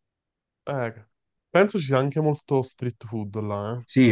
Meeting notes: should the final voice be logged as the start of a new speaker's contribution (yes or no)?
yes